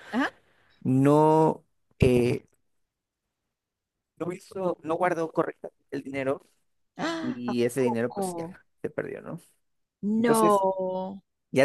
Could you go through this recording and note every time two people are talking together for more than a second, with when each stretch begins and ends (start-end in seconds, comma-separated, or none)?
7.2-8.6